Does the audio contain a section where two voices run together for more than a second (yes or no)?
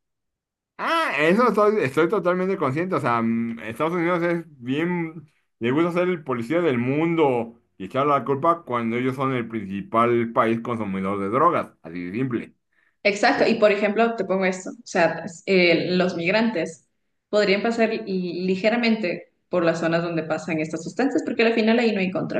no